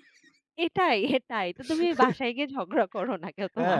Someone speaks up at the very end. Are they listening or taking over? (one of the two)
taking over